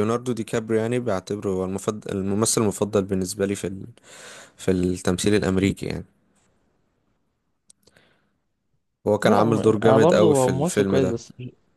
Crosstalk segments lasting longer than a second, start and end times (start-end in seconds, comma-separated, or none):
9.2-11.2